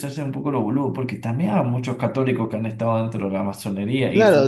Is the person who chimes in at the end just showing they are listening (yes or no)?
no